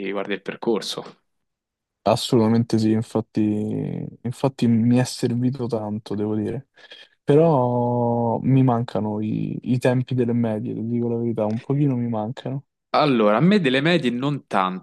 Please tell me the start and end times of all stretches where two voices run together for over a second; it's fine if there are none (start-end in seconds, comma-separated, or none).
none